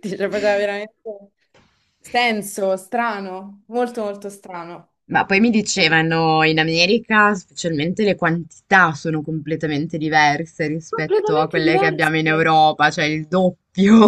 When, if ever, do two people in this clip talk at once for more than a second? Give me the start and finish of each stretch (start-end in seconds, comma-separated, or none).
10.9-12.1